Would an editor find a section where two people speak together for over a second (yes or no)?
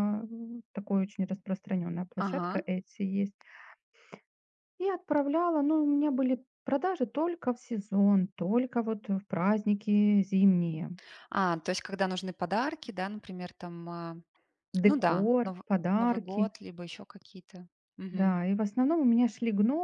yes